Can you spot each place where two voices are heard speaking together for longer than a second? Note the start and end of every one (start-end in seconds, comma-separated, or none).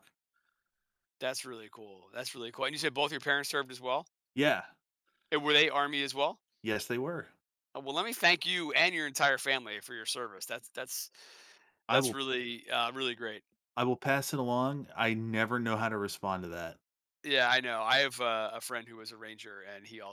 none